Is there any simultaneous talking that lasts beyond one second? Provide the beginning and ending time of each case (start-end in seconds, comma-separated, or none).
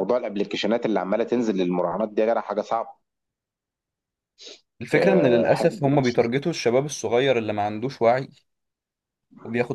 4.9-6.2